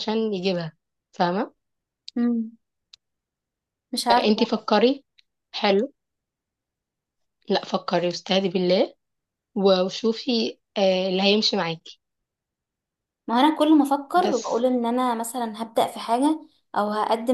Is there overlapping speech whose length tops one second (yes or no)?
no